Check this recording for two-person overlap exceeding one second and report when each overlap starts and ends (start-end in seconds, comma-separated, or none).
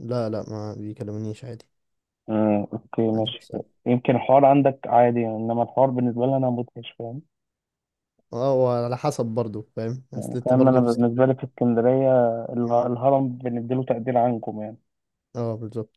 10.2-11.4